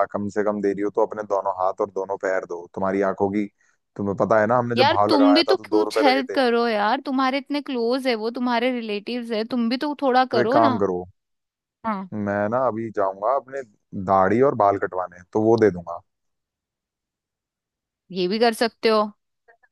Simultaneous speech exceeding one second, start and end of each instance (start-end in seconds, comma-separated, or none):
4.8-6.4